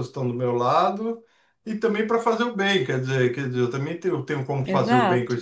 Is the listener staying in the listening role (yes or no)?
no